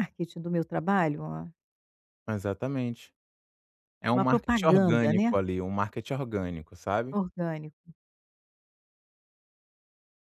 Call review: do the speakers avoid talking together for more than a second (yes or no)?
no